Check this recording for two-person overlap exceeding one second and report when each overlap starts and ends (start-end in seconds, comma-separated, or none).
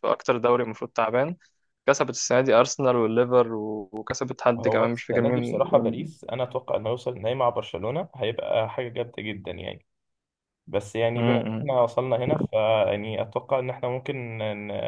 4.6-6.0